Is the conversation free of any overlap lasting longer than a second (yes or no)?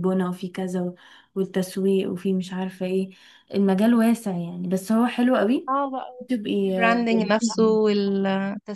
yes